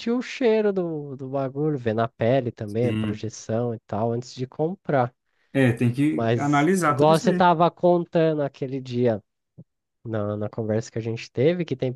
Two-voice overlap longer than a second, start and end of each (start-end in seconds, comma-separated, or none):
6.1-7.5